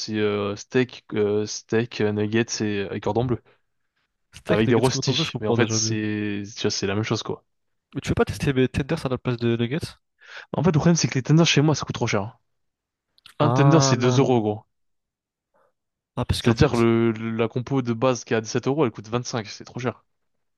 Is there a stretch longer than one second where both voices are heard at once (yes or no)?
yes